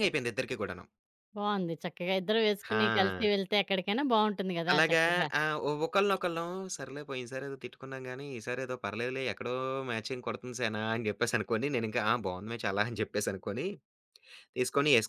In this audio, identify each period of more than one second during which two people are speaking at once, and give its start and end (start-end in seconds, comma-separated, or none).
none